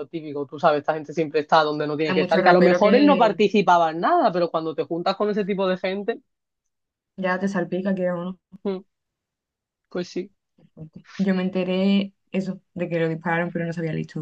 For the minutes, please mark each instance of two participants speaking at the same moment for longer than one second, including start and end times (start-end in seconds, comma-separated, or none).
2.0-3.4